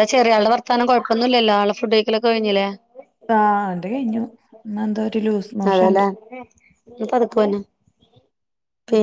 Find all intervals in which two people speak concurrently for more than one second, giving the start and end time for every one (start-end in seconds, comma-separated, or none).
none